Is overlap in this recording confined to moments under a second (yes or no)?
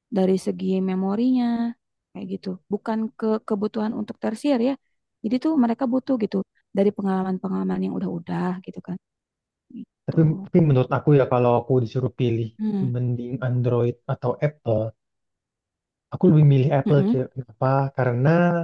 yes